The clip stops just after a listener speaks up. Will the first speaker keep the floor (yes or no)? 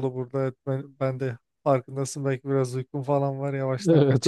no